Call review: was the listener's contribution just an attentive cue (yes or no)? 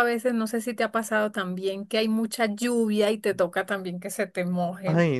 no